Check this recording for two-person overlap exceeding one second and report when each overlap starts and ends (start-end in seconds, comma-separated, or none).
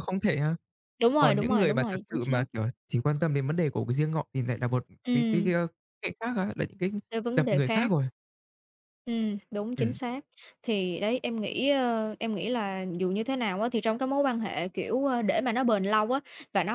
1.2-2.4